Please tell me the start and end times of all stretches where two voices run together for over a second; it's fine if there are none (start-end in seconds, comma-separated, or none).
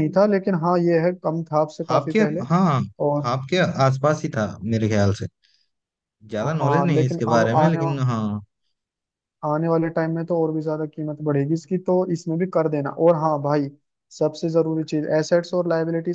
6.4-7.9